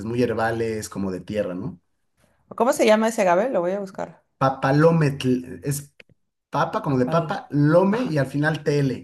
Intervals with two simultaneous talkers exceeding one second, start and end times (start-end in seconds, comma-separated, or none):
none